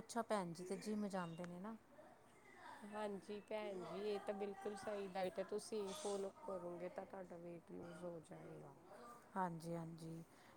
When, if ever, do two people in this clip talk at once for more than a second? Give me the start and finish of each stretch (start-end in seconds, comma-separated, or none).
none